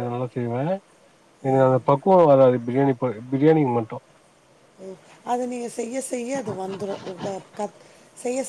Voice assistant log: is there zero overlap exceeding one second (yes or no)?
yes